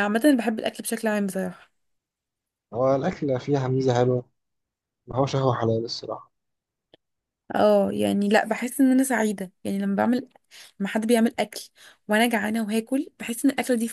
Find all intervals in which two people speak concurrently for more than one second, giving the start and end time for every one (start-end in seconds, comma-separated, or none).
none